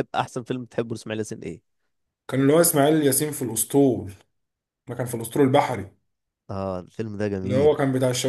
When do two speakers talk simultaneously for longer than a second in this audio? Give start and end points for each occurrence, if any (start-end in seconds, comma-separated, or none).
none